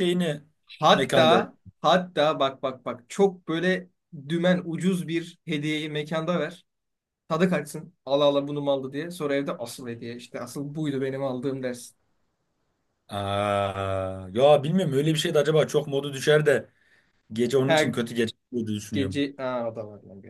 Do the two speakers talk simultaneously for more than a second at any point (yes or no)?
no